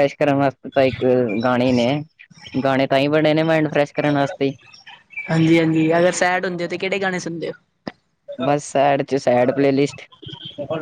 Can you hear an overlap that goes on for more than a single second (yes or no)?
no